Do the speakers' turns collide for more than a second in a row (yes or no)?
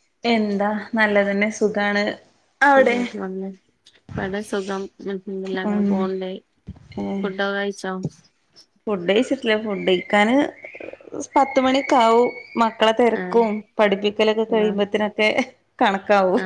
no